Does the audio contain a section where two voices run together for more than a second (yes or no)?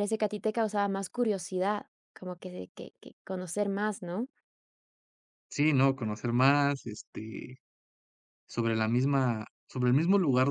no